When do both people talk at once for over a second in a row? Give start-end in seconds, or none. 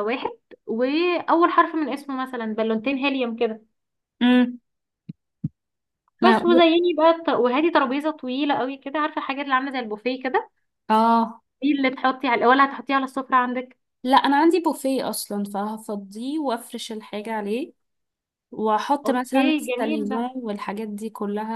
19.0-20.4